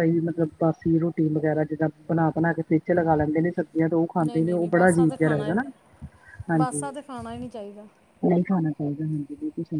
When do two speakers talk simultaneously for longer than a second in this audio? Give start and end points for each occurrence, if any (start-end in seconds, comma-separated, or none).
4.2-5.5